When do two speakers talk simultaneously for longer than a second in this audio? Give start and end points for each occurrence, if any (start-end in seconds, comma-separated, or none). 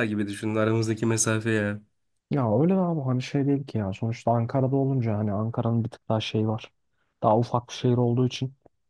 none